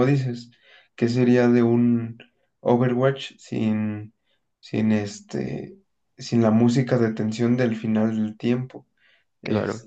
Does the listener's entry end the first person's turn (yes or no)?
no